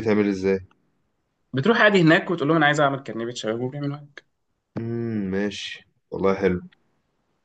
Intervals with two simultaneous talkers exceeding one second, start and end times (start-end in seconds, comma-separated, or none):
none